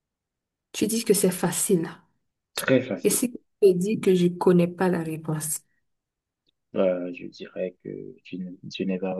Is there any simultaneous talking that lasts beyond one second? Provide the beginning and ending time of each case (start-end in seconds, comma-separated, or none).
none